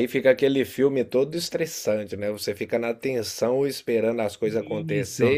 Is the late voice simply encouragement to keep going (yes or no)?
yes